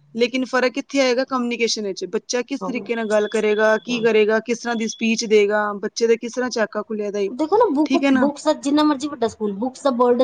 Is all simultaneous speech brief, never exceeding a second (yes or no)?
yes